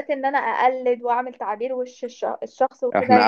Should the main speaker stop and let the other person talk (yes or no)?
yes